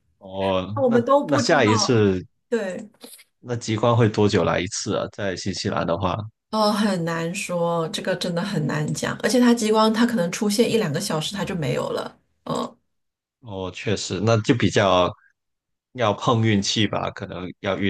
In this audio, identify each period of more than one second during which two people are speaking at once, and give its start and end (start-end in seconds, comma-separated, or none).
0.7-2.1